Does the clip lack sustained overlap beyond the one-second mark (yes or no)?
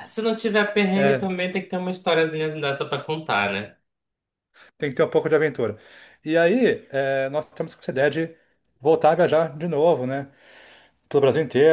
yes